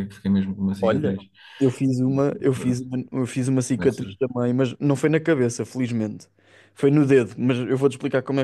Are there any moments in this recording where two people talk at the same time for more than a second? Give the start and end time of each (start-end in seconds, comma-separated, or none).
none